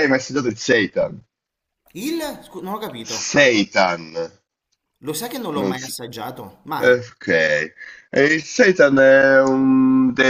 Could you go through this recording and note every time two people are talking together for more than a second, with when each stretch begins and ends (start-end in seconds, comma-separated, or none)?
none